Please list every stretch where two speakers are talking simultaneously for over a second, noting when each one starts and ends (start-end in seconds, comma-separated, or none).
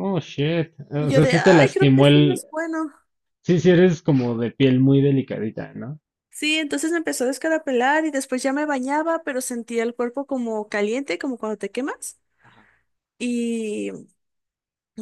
1.0-2.4